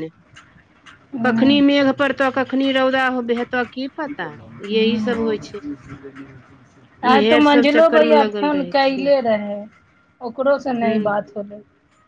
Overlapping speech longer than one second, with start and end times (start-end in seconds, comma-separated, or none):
7.1-9.1